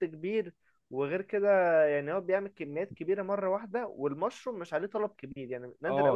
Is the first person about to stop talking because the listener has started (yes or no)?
yes